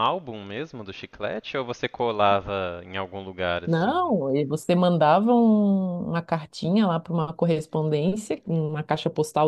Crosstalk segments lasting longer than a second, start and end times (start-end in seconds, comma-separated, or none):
none